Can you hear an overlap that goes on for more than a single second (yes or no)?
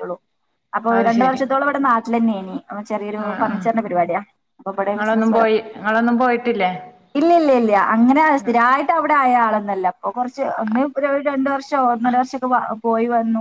no